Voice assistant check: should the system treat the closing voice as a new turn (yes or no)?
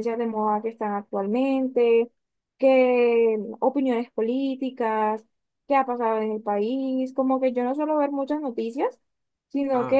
no